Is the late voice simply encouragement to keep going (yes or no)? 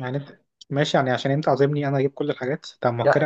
no